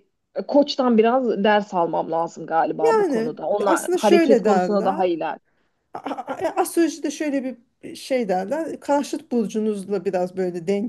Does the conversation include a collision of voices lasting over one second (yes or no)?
yes